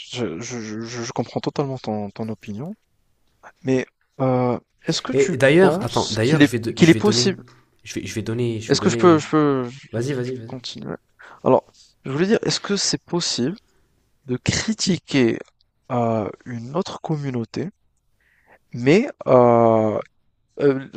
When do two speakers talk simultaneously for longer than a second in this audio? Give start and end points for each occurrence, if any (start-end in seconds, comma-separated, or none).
5.1-7.4